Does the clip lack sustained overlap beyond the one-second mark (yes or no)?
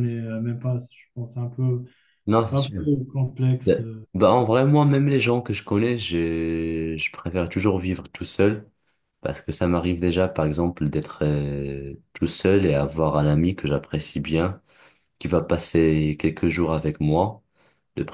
yes